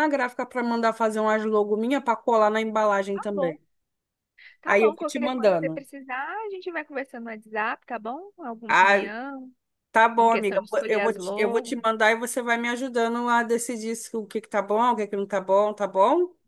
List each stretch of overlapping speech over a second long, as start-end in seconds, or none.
4.6-5.9, 10.2-11.8